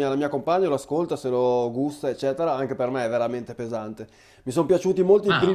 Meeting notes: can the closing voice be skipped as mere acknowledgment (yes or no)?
yes